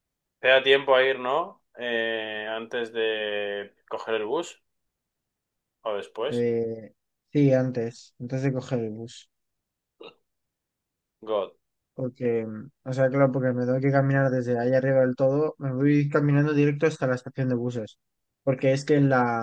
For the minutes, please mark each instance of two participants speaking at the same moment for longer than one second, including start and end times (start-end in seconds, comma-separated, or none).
none